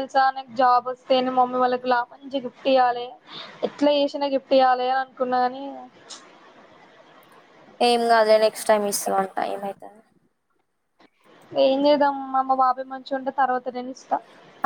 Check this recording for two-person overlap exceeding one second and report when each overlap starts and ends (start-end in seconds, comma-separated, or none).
none